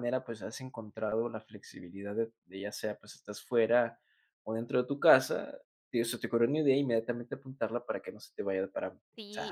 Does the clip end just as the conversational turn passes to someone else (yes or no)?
yes